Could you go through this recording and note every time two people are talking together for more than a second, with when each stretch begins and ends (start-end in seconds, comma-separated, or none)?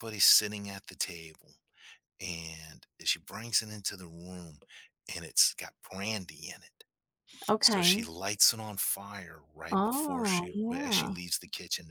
9.7-11.2